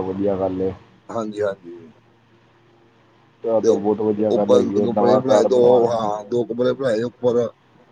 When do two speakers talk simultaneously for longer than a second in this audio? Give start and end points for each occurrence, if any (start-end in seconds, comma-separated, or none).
3.6-6.1